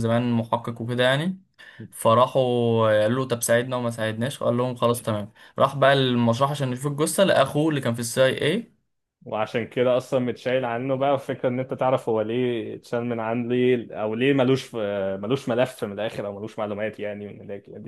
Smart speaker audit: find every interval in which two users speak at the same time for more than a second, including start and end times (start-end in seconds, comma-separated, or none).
none